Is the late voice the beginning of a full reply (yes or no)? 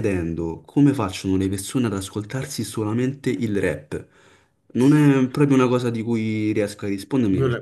yes